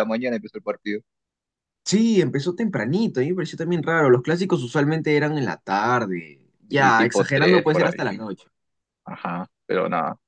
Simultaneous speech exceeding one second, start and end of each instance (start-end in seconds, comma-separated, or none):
6.7-8.2